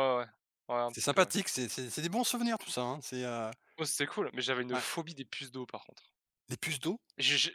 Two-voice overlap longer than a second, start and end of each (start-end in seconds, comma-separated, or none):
none